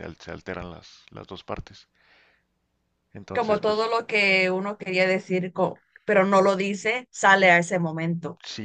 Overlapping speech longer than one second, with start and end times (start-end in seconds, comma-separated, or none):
none